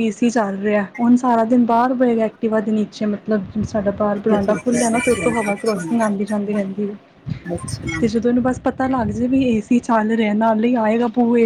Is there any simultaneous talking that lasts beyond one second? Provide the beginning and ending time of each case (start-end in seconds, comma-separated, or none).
4.3-5.8